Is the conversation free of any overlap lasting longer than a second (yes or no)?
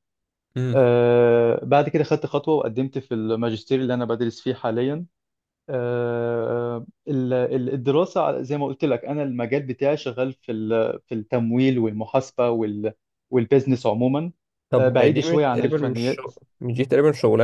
no